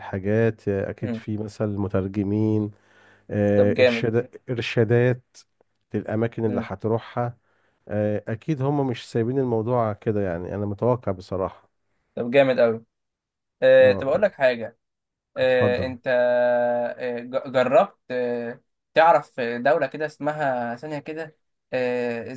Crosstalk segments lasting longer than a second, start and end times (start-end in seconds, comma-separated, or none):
none